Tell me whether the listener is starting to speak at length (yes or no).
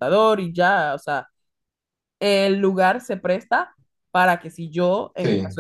no